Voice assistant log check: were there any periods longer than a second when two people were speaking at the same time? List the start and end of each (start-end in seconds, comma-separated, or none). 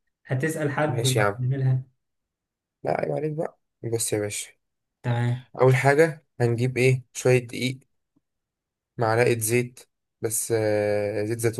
none